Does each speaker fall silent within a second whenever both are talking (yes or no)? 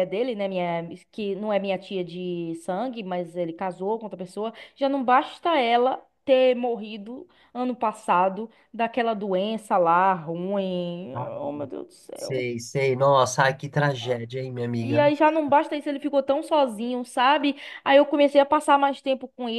yes